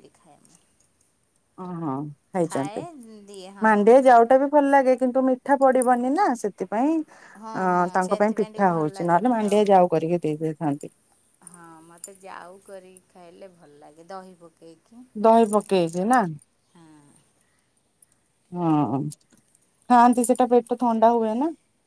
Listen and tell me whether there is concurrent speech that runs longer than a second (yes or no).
yes